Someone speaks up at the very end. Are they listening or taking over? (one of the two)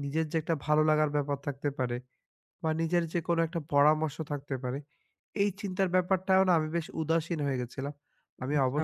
listening